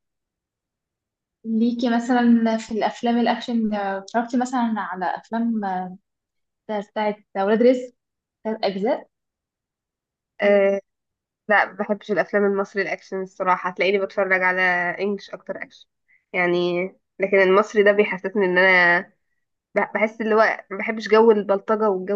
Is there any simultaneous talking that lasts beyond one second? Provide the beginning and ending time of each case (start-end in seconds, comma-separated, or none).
none